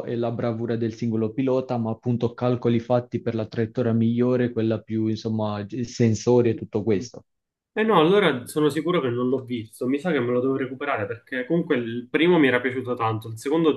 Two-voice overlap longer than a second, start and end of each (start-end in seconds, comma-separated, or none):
none